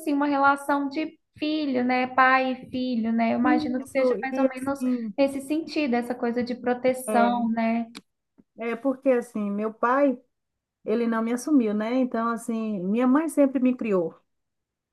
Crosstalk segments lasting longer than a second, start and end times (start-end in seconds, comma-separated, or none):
3.4-4.8